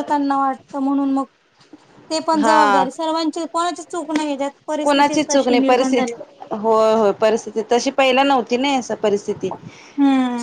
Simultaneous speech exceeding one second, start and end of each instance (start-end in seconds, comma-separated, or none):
4.8-6.1